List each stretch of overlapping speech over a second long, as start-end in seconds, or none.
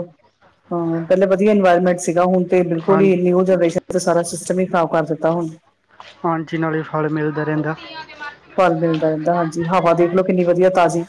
none